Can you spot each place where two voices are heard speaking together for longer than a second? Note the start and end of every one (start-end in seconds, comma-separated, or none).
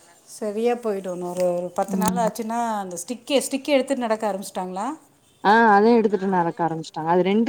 none